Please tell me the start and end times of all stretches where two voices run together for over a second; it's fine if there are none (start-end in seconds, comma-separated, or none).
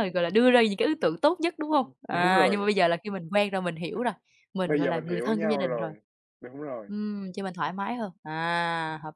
4.7-5.9